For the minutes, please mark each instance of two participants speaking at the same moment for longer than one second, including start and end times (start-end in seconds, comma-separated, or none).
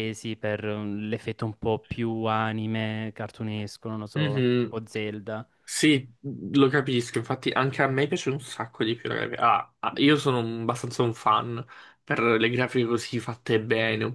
none